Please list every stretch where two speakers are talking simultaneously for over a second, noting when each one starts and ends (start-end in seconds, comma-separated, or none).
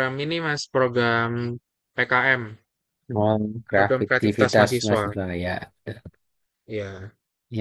3.8-5.1